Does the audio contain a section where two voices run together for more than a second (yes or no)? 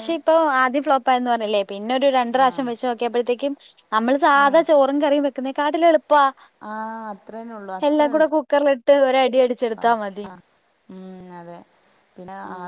no